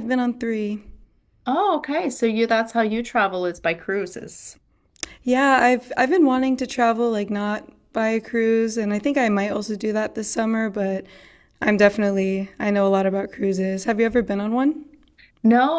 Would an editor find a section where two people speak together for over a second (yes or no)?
no